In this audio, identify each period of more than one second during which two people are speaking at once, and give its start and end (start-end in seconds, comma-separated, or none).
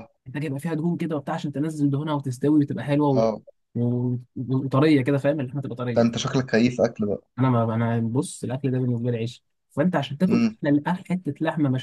none